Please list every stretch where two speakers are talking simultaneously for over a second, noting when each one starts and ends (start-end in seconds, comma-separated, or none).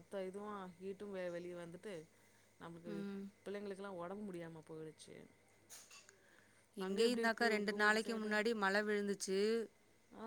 6.8-8.3